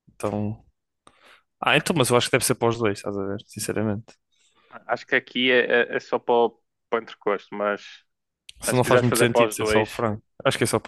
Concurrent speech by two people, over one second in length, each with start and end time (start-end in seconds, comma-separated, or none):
8.7-10.0